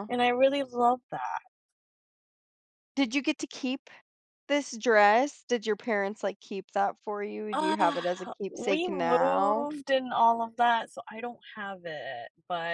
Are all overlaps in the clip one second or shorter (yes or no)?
no